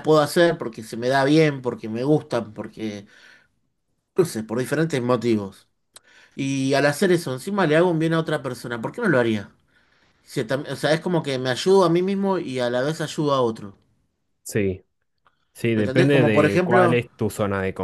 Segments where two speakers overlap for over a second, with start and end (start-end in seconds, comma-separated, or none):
15.7-17.0